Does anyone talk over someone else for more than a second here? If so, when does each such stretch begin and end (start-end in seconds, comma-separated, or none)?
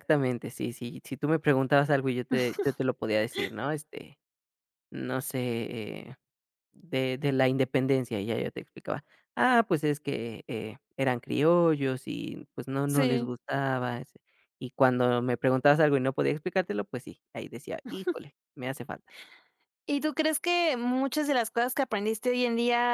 none